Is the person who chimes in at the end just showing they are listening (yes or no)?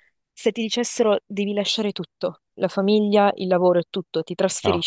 yes